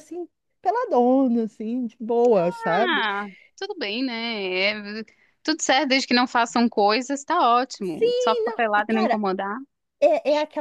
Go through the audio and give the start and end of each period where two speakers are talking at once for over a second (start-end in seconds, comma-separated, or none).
7.8-9.2